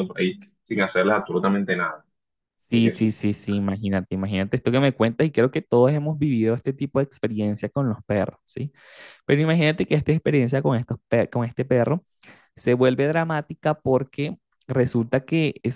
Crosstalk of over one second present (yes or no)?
no